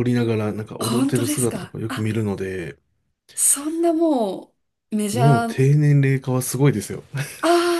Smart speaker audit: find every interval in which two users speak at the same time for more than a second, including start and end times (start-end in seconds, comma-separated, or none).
0.8-2.1